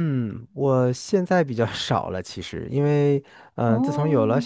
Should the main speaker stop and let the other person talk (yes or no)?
no